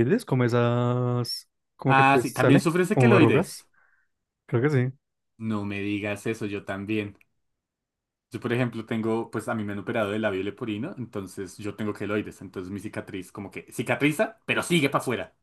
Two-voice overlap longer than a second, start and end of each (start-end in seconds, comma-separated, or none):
1.9-3.7